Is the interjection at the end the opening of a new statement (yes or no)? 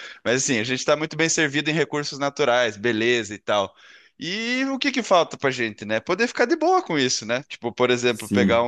no